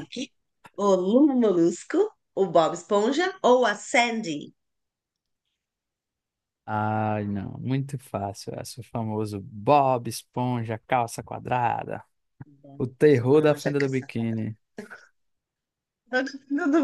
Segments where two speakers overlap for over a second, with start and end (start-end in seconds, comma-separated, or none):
12.8-14.5